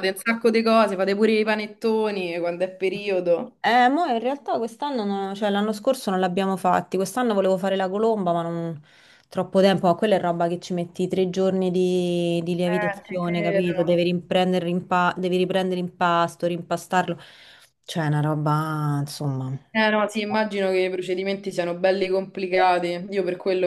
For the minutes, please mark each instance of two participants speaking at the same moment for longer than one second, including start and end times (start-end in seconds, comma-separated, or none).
12.7-13.9